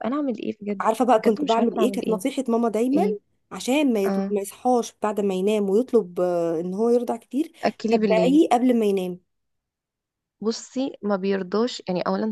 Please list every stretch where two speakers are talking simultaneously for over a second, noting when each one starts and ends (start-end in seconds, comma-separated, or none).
0.8-2.2